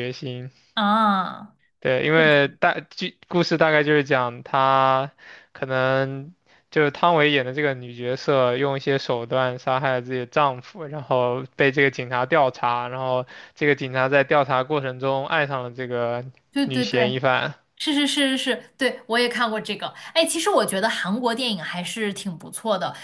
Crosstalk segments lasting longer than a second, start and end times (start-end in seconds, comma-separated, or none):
none